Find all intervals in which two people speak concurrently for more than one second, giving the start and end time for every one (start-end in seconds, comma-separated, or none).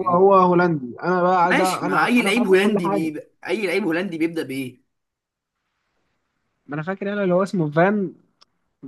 1.4-3.1